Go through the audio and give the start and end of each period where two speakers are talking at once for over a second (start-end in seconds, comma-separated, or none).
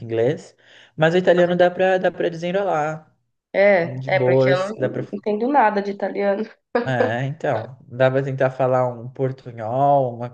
3.8-5.0